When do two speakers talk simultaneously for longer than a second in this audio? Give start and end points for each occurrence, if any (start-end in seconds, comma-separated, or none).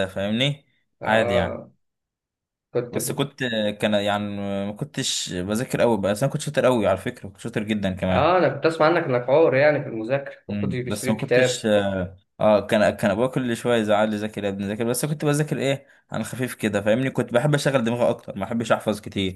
10.5-11.7